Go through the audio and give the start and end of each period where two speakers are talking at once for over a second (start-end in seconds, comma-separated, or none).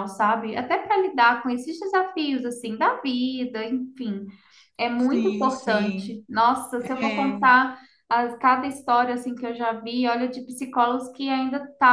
5.0-6.2